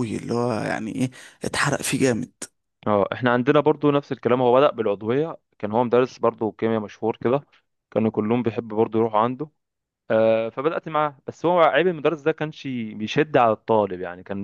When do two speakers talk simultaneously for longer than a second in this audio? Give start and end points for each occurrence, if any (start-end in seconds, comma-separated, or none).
none